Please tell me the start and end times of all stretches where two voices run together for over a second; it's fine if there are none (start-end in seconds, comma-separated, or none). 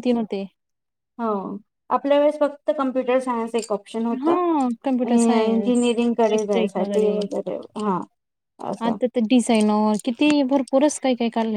5.1-7.1